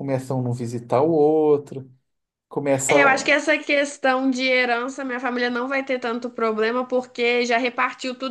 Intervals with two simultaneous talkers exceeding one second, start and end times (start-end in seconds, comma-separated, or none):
none